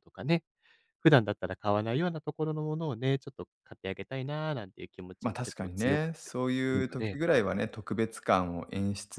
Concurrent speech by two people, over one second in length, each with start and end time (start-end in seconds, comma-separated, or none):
5.2-7.2